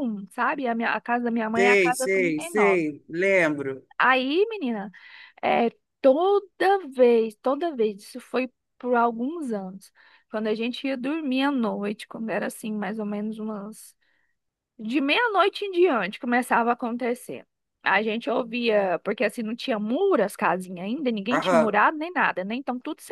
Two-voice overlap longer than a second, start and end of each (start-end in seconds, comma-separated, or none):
1.6-2.9